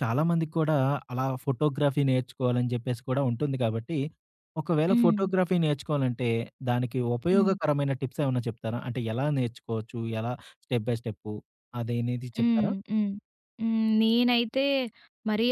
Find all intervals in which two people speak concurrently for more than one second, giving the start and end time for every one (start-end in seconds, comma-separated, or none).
none